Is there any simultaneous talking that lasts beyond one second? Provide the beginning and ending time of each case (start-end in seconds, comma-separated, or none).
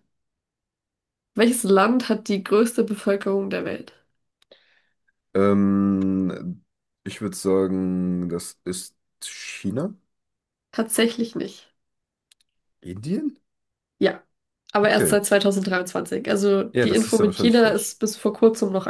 16.7-18.0